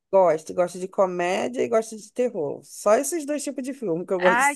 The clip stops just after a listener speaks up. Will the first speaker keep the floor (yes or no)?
no